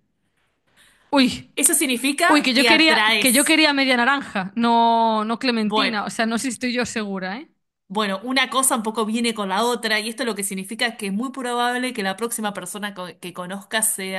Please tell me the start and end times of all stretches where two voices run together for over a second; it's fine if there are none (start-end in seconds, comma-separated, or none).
2.3-3.6